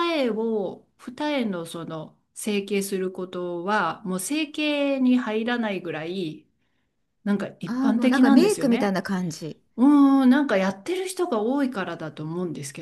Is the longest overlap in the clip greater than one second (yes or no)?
yes